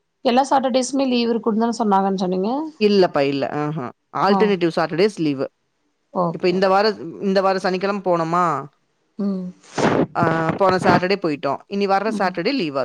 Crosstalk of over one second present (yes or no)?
no